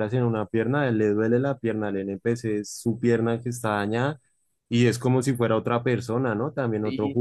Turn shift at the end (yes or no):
yes